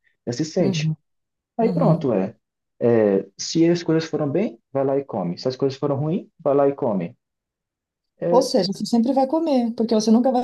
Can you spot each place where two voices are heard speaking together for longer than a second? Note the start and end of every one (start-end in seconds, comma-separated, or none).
none